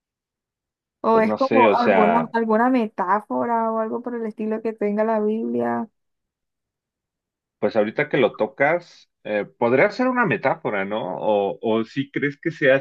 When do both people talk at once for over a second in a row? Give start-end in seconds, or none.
1.1-2.3